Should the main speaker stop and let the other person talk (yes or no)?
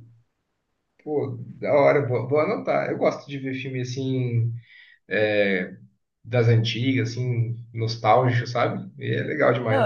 yes